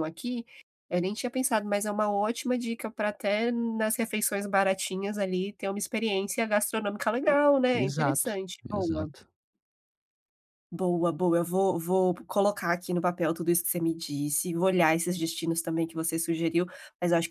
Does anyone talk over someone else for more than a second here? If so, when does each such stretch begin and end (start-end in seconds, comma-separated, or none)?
7.7-9.1